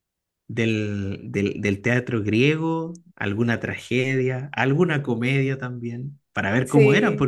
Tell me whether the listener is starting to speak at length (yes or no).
no